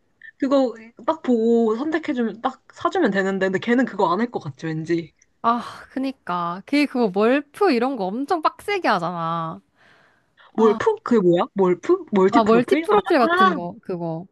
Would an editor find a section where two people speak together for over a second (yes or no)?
yes